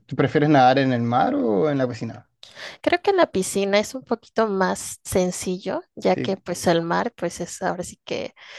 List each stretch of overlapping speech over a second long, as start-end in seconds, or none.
none